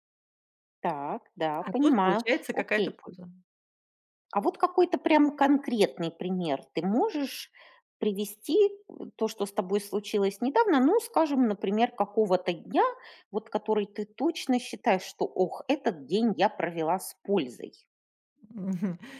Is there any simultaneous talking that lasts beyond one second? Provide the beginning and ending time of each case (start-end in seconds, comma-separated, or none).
1.6-3.0